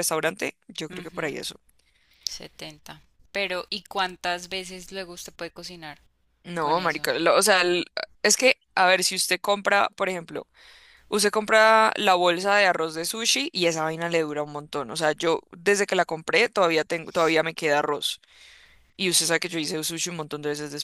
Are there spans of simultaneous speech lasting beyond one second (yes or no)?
no